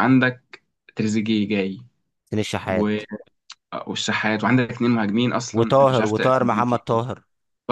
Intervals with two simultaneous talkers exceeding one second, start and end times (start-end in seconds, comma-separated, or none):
5.5-6.8